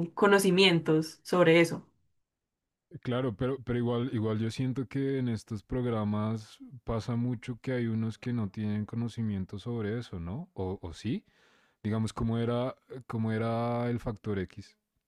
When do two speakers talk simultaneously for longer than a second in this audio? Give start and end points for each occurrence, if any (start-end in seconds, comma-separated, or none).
none